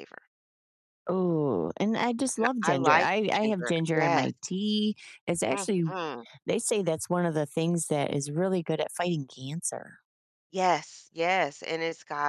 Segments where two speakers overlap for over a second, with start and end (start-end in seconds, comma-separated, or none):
2.4-4.3